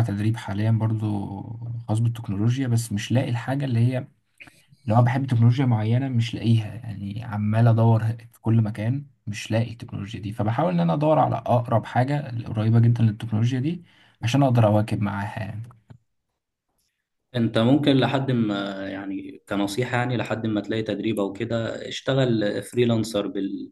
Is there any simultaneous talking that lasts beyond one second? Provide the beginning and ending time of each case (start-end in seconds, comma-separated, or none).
none